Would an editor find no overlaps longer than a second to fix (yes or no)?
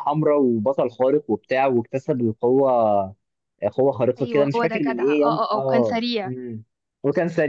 no